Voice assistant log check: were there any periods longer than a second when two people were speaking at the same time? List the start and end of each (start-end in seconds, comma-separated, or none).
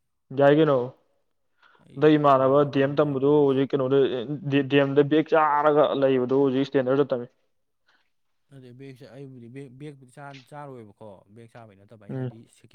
2.0-3.5